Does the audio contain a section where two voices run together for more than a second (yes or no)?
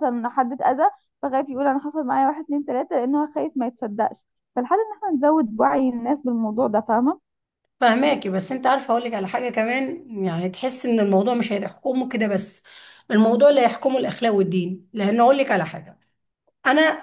no